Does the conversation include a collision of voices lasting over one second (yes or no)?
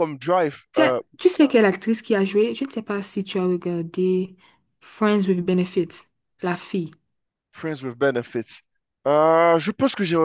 no